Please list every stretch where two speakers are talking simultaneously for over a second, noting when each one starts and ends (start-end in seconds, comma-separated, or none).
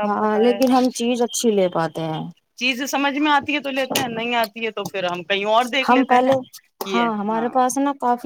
none